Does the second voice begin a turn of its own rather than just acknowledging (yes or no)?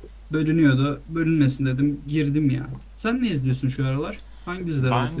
yes